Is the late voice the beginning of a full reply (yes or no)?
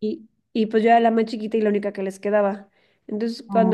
no